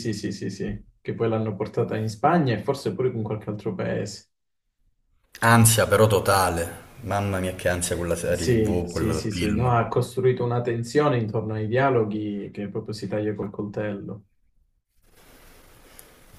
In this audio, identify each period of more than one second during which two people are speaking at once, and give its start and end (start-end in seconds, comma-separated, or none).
8.3-9.8